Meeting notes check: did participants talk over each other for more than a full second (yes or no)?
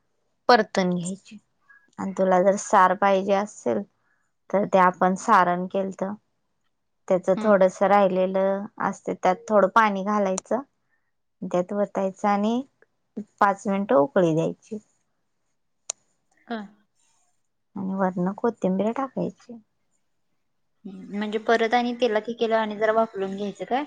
no